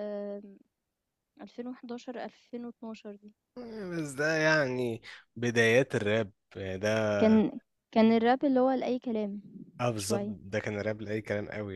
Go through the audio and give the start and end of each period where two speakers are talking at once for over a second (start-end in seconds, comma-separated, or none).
none